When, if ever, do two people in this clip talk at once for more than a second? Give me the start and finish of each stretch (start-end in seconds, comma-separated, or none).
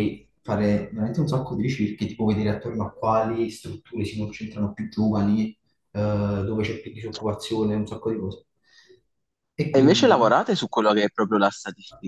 none